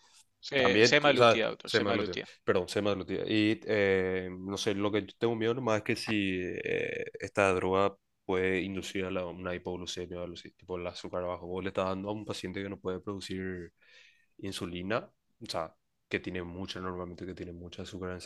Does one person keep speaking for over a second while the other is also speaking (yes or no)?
yes